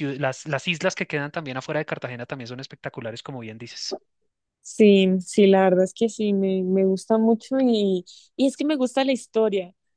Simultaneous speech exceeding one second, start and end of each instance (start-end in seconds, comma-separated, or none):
none